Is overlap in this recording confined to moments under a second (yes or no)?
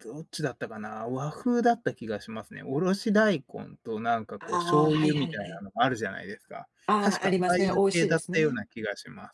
no